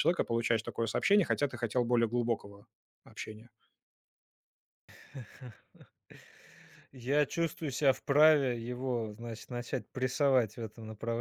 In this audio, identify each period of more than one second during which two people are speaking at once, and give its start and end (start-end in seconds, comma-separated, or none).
none